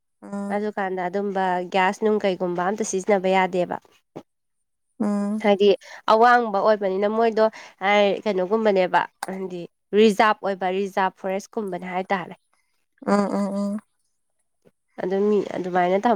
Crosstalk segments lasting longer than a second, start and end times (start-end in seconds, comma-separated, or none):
none